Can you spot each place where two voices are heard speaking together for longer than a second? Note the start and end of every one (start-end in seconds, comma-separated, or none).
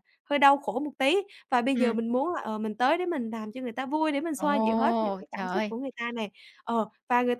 4.4-5.7